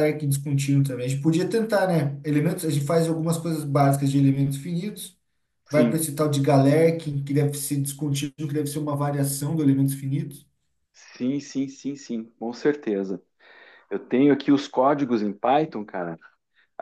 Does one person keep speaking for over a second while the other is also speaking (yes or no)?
no